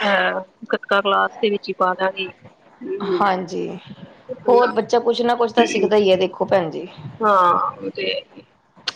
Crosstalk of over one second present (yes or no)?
no